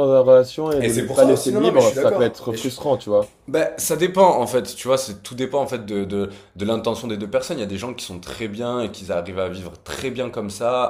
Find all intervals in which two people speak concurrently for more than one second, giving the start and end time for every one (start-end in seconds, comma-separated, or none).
0.8-2.7